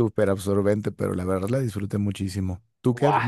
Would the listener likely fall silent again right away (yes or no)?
no